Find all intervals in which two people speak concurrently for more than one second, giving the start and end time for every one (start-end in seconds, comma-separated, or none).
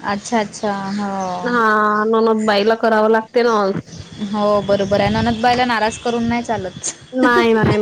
none